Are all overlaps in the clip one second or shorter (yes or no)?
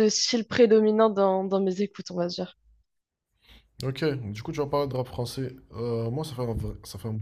yes